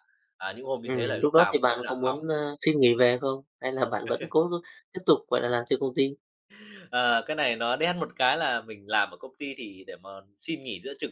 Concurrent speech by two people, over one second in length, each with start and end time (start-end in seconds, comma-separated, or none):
0.8-2.2